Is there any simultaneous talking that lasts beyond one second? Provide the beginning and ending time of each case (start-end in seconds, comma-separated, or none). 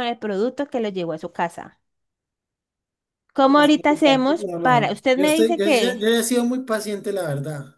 4.4-6.1